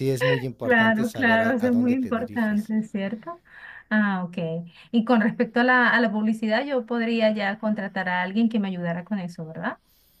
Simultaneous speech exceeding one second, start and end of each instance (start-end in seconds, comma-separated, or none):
0.6-2.7